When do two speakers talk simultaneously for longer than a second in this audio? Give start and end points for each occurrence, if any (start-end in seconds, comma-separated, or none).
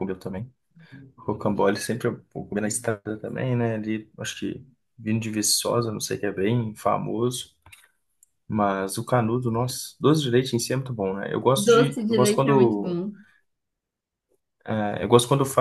11.6-13.0